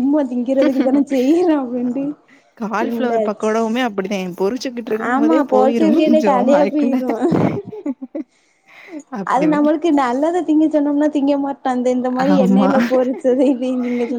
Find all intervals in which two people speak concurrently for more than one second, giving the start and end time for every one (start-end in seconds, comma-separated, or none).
5.1-6.9